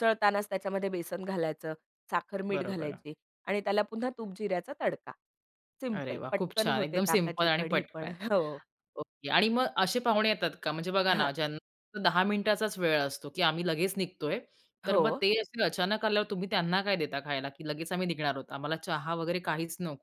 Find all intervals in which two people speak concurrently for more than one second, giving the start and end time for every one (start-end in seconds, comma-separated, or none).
6.0-8.1